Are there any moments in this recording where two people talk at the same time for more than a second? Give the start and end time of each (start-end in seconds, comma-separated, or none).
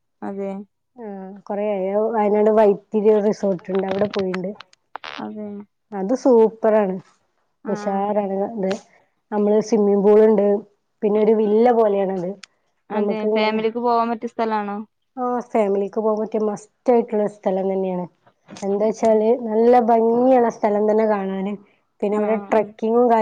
none